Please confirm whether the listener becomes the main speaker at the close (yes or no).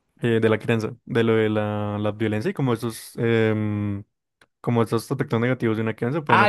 yes